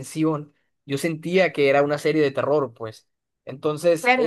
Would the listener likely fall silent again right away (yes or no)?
no